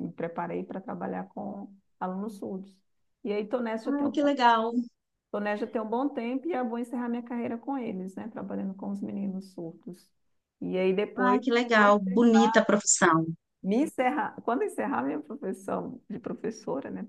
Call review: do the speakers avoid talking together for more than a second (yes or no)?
no